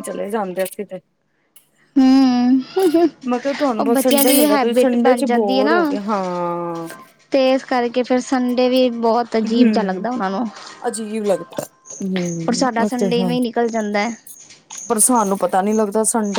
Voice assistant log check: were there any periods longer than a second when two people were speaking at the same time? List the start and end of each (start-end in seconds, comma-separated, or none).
3.8-5.8